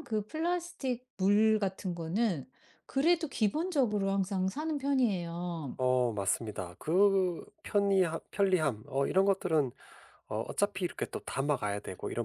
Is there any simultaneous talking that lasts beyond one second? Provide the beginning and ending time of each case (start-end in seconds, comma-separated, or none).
none